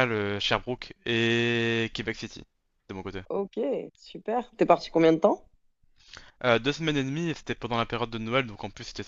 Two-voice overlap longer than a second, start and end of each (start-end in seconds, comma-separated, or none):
none